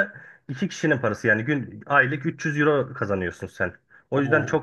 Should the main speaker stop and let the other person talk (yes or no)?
yes